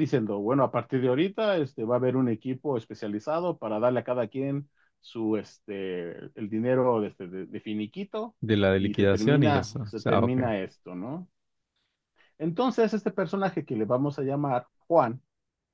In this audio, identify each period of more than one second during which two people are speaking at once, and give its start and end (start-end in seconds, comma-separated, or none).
8.8-10.4